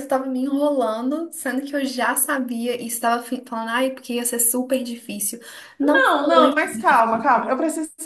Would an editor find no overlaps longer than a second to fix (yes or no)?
no